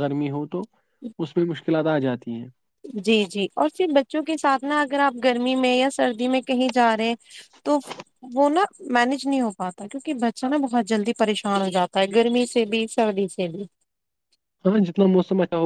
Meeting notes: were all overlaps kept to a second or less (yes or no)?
yes